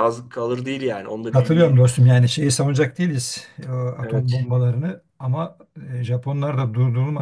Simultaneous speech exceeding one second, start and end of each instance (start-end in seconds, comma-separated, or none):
none